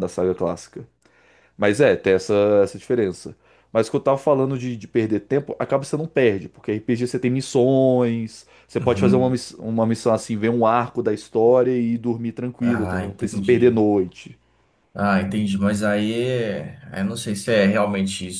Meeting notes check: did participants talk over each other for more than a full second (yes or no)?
yes